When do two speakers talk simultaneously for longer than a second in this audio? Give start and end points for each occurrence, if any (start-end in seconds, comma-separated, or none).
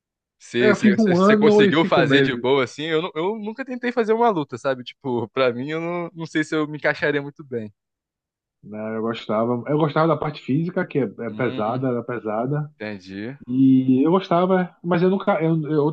0.6-2.4